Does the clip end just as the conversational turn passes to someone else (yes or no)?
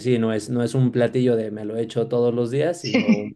no